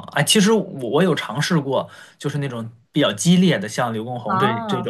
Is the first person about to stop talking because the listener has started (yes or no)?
no